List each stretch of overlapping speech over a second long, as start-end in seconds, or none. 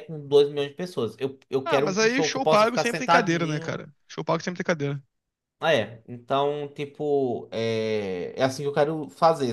1.6-3.8